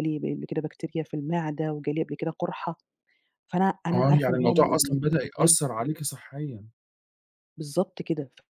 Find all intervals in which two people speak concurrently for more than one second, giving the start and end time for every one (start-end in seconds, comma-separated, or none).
3.9-5.8